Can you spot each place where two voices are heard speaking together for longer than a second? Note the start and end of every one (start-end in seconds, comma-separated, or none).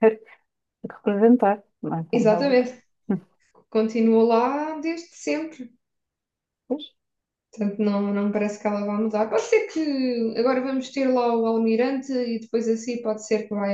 none